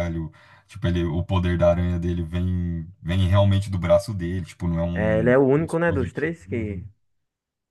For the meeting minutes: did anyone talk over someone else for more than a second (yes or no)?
yes